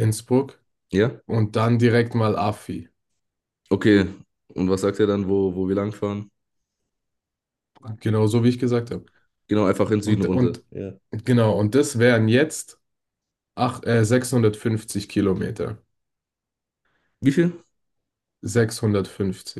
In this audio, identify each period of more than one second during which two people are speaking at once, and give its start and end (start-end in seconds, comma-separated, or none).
none